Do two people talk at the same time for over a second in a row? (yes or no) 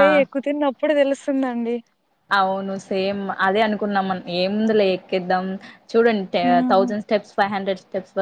no